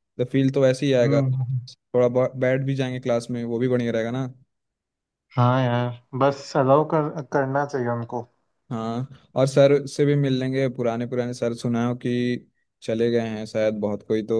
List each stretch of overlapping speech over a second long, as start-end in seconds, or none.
none